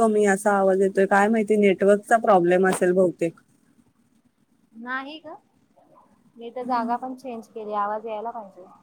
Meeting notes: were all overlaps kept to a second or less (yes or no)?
yes